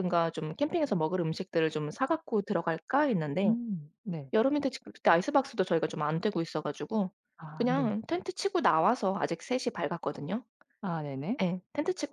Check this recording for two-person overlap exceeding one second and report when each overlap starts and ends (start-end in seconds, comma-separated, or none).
none